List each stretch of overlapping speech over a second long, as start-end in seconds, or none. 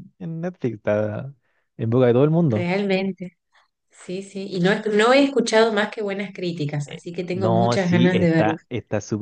6.9-8.6